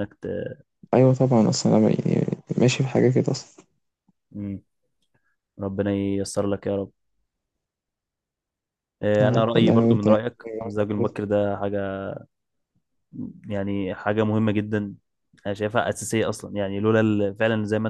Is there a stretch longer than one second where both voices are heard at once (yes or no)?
yes